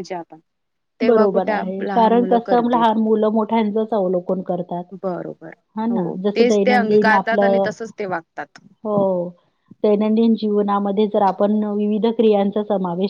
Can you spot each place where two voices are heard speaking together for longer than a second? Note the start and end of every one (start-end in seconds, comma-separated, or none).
5.9-7.7